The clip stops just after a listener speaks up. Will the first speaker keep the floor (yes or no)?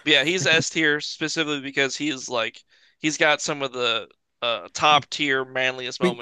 no